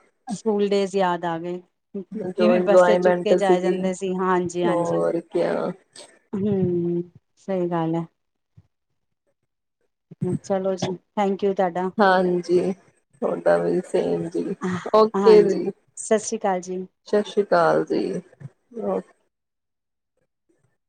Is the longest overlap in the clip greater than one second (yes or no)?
yes